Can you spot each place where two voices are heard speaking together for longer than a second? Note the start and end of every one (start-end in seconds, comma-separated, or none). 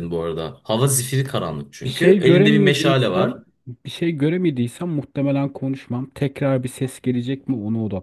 1.8-3.4